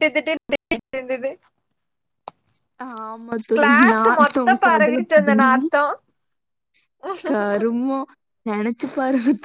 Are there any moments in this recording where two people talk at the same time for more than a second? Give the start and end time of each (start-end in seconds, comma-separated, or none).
3.6-5.5